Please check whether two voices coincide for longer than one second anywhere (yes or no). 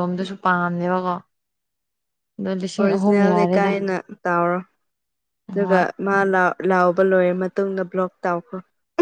no